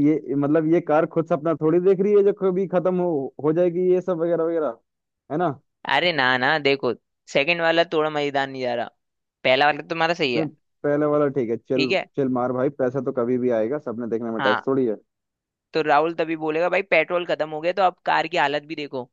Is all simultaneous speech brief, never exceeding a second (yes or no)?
yes